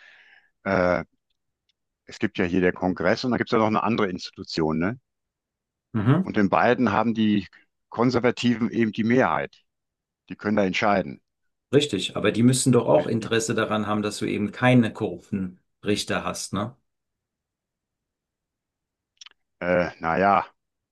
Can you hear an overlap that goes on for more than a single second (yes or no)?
no